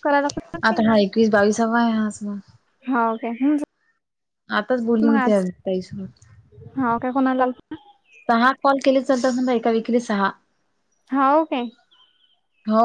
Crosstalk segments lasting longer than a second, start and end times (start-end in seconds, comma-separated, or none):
none